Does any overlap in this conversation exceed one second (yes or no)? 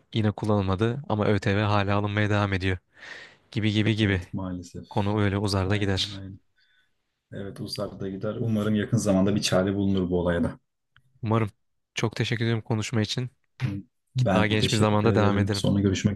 yes